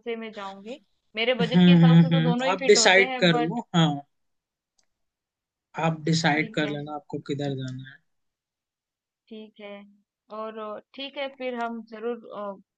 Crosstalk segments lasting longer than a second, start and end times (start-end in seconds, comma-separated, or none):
1.4-3.6